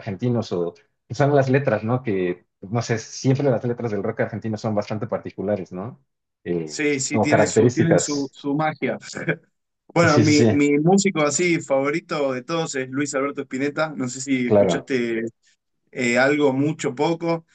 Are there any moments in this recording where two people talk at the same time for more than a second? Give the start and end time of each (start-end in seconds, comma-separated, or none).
6.6-8.3